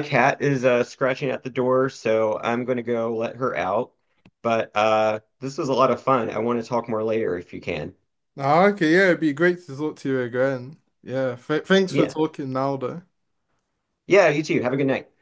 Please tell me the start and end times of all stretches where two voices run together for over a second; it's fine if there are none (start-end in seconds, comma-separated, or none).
none